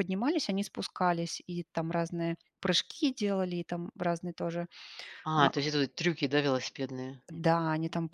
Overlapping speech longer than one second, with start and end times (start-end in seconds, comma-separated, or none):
none